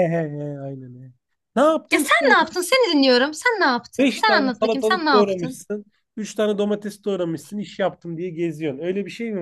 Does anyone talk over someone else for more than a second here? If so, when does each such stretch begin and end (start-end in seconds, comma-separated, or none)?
4.0-5.6